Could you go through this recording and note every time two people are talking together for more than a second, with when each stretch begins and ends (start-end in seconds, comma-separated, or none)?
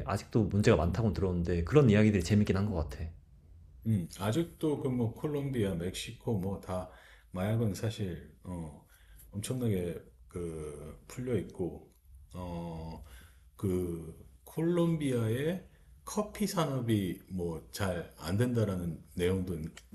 none